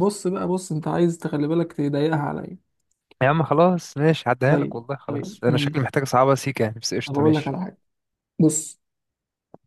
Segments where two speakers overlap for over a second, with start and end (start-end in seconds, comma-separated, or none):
4.5-5.9